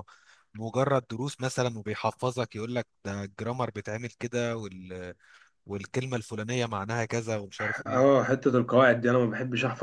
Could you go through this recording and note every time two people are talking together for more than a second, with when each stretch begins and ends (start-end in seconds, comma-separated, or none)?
none